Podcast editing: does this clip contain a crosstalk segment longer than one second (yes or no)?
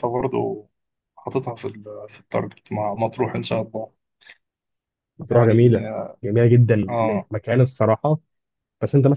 no